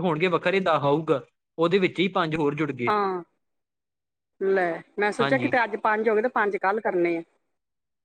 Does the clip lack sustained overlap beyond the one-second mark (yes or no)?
yes